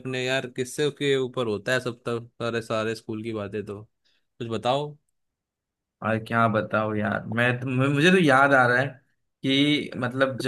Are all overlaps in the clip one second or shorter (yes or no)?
yes